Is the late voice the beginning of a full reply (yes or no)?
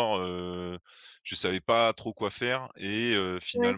no